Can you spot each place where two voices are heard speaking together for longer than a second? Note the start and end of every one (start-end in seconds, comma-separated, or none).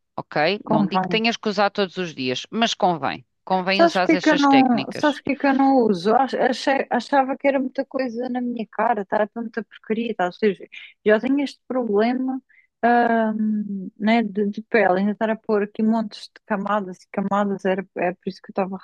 3.7-5.2